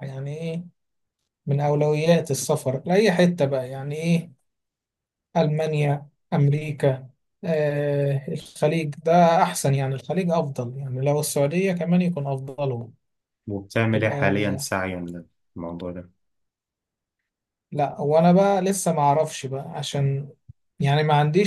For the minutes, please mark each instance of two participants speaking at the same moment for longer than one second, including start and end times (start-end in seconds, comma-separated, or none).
none